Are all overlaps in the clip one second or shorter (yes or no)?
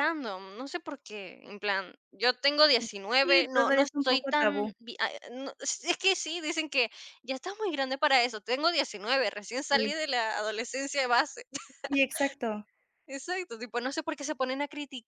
no